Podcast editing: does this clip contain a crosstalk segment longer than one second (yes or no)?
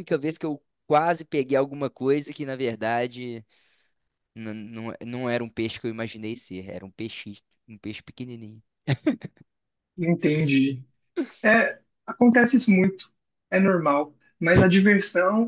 no